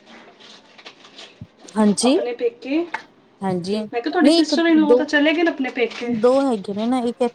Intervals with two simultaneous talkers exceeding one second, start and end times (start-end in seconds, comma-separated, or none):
4.2-6.1